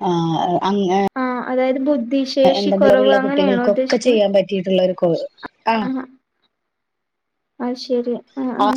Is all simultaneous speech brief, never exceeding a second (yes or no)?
no